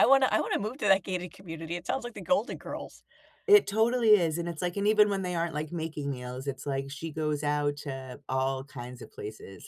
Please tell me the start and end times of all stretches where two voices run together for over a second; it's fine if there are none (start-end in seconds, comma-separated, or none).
none